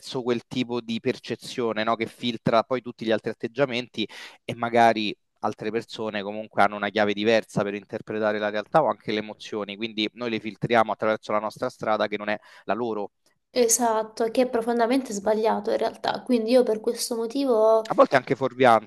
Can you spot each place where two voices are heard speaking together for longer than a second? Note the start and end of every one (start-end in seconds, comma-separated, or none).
none